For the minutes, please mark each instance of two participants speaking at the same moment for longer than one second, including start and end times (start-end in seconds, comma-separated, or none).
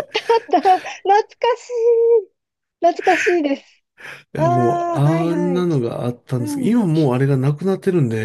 4.4-5.7